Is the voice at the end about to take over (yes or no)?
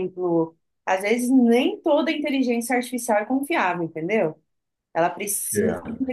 no